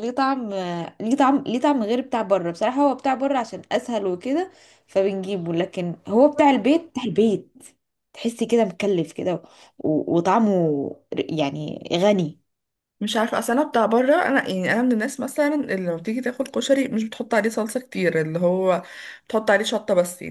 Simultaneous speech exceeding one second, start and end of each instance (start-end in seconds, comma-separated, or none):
none